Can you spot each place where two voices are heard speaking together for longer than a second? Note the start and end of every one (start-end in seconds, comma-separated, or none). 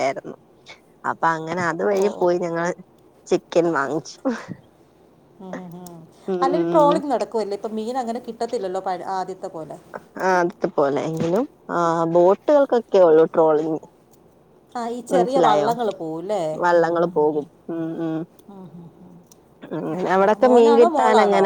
none